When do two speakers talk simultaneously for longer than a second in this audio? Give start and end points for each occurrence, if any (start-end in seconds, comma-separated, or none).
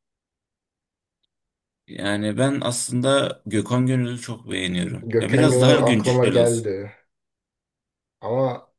5.1-6.7